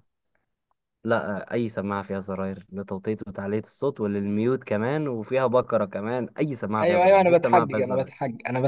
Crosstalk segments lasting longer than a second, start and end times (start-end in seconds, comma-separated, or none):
6.8-8.1